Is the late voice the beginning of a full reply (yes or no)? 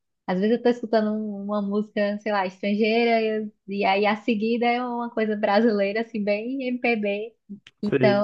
no